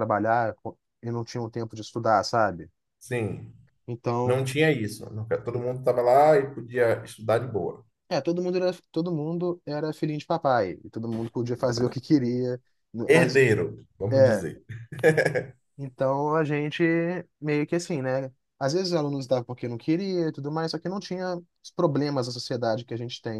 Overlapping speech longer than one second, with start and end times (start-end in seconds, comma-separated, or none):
none